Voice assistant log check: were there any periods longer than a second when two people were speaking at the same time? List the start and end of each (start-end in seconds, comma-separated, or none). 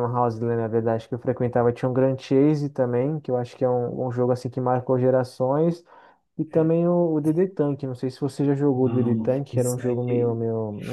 8.7-10.4